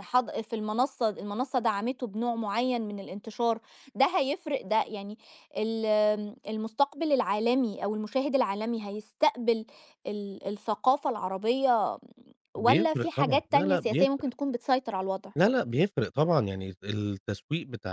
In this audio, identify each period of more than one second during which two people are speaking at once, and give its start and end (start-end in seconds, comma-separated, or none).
12.6-14.3